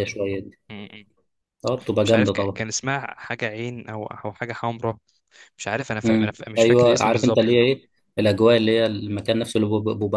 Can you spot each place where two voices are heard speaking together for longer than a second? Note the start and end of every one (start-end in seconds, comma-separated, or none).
6.0-7.5